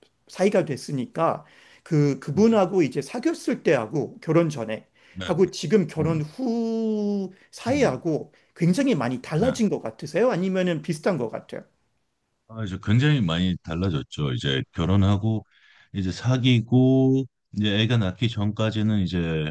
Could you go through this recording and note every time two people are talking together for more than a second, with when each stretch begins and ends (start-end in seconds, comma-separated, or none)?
none